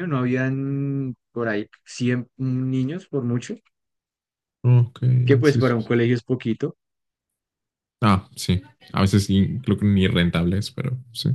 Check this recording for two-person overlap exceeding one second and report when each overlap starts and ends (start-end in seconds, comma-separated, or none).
none